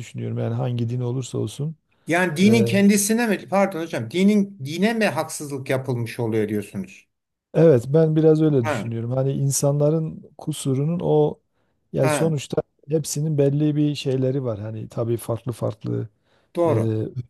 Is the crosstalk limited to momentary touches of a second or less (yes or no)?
yes